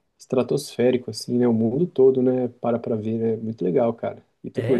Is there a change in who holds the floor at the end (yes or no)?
yes